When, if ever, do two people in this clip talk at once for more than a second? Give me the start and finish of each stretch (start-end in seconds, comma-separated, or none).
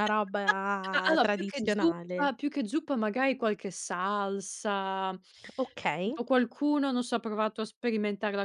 0.9-2.3